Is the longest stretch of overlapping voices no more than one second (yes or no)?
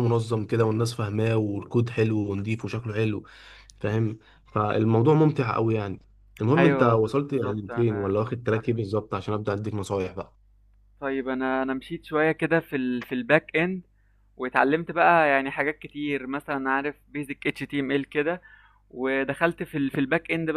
no